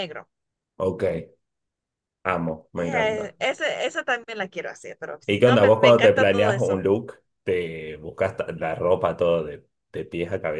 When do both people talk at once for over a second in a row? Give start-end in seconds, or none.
5.3-6.9